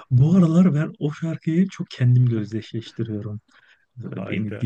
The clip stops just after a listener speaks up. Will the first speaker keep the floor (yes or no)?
yes